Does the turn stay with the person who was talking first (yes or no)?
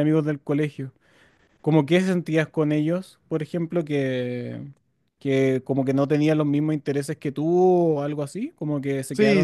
no